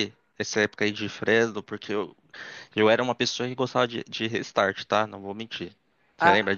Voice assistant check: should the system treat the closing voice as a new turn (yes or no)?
yes